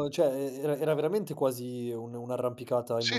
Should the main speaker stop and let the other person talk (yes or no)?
yes